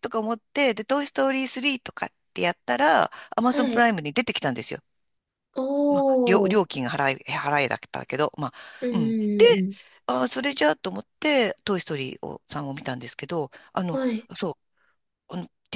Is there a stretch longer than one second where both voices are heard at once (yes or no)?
no